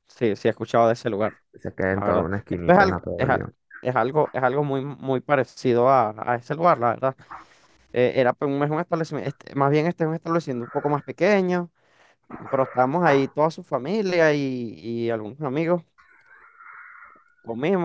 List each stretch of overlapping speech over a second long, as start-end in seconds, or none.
1.9-3.4